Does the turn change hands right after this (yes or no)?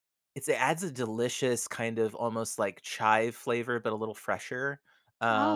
no